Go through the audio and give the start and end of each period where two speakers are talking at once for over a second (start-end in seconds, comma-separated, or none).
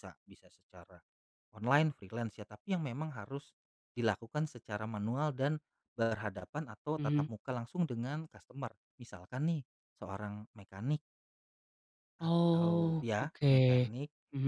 12.3-13.9